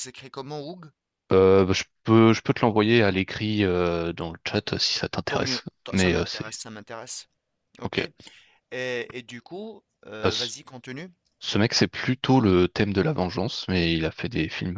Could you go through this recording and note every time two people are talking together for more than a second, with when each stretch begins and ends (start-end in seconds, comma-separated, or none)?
5.3-6.6